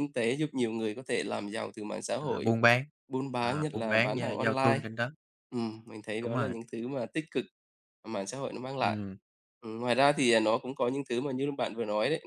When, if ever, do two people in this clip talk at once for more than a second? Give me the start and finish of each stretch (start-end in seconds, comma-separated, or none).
3.4-4.8